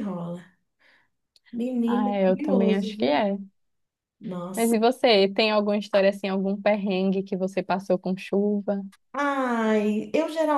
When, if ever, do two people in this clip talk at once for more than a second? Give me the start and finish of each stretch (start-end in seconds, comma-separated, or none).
1.9-3.2